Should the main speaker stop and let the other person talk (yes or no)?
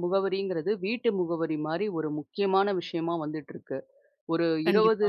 no